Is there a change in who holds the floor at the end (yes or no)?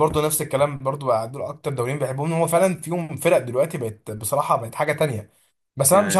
no